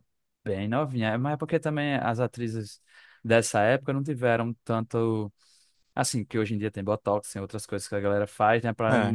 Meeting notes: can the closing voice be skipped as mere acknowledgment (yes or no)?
yes